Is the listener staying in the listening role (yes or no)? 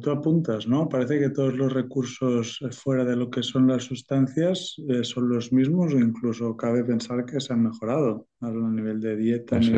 yes